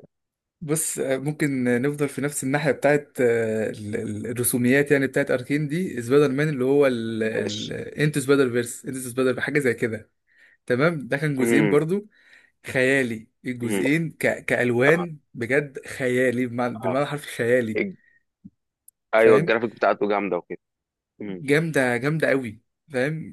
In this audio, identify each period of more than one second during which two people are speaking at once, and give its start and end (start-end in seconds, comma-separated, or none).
none